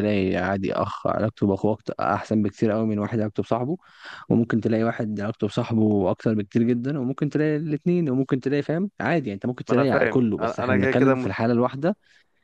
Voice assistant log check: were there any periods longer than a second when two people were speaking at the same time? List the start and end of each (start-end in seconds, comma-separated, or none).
9.7-11.3